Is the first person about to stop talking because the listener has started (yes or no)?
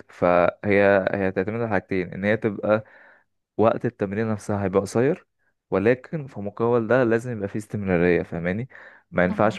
no